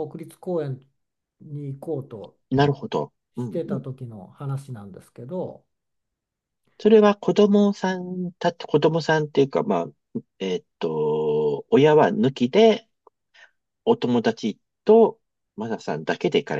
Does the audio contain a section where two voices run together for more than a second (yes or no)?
no